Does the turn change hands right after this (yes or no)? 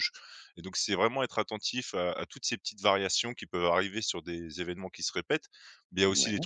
no